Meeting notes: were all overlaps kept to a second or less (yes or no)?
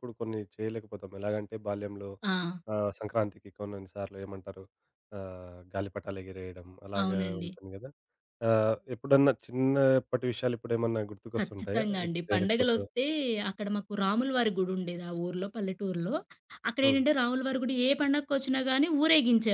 no